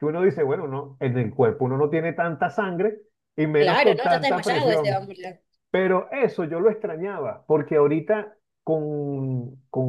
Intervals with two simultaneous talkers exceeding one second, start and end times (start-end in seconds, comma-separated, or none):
3.6-5.1